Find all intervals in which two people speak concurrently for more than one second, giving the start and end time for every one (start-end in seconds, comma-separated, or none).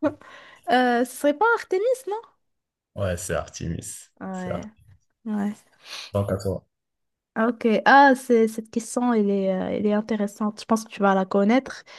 none